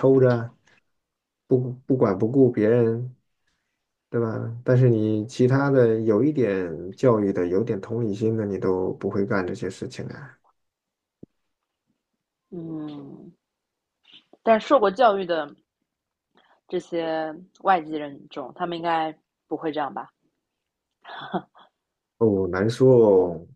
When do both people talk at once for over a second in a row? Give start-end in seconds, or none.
none